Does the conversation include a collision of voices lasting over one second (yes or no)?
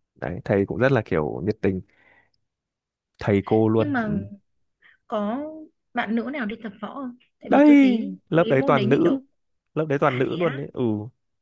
yes